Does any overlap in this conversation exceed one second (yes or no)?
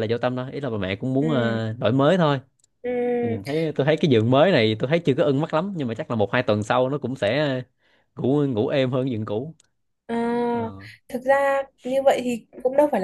no